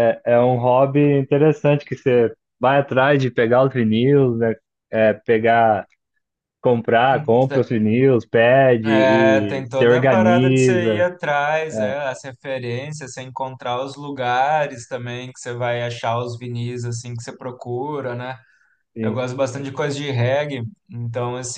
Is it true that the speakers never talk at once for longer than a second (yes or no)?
no